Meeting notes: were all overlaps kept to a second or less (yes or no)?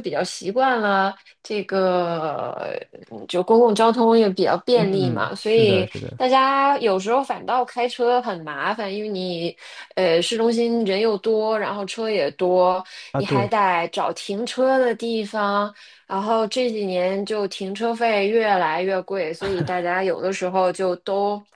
no